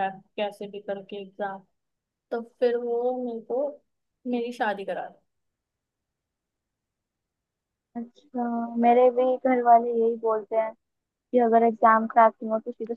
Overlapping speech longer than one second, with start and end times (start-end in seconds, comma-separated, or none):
none